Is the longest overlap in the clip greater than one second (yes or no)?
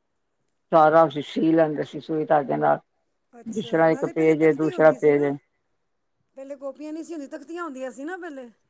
yes